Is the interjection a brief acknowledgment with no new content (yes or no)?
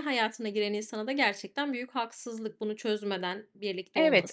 no